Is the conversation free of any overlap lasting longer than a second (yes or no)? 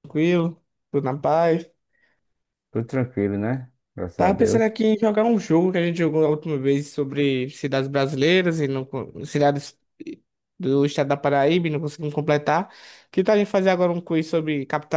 yes